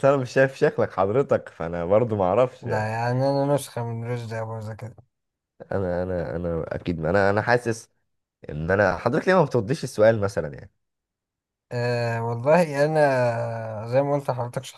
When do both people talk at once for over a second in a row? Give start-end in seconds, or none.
none